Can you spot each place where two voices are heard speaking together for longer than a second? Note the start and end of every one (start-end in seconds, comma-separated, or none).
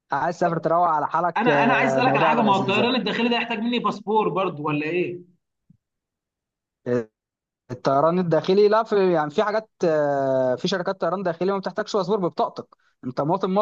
1.4-2.8